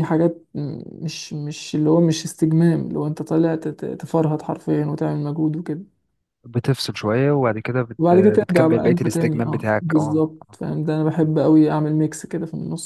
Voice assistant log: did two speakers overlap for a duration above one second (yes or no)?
yes